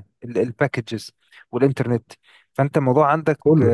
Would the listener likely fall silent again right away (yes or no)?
yes